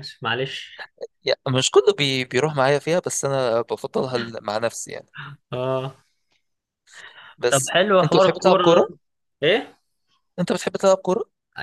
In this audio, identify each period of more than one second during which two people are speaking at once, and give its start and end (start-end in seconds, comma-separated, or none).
7.5-8.9